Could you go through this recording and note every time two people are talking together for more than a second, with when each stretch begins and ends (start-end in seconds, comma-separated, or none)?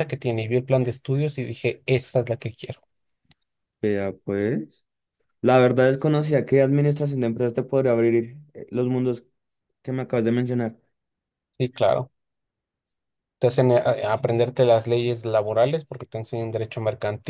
none